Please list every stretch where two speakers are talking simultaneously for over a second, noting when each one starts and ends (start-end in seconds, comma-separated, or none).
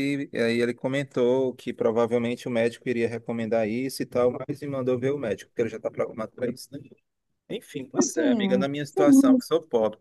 8.0-9.5